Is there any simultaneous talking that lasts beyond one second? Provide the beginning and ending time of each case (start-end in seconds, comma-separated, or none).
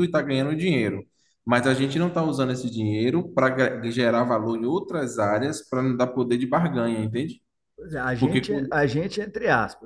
none